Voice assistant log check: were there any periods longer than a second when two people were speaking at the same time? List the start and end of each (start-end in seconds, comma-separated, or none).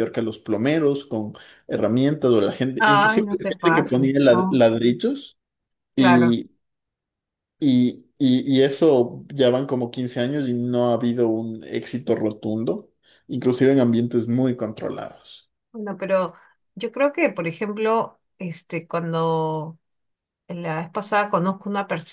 2.8-4.7